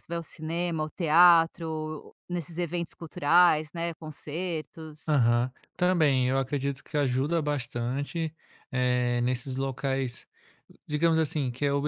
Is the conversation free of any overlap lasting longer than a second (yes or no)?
yes